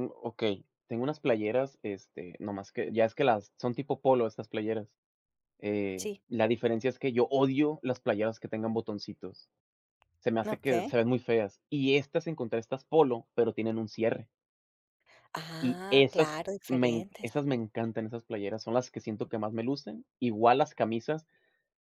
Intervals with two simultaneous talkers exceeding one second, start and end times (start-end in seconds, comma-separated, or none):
15.6-17.3